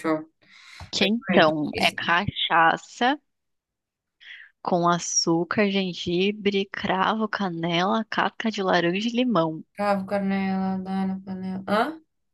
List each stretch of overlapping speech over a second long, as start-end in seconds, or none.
1.0-2.2